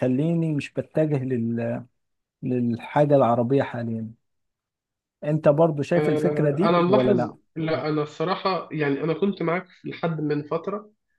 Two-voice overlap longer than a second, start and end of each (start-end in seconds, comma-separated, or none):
6.0-7.3